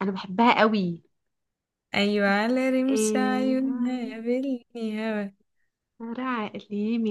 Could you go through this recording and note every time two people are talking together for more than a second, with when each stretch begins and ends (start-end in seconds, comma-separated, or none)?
2.9-4.2